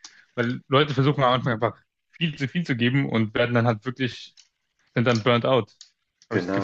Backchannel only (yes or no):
no